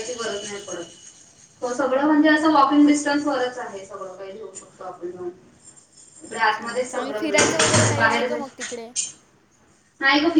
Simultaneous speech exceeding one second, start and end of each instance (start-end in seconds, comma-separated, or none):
6.3-8.7